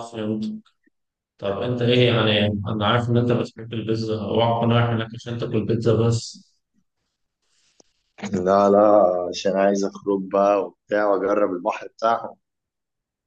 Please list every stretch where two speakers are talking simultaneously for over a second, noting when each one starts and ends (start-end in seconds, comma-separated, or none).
none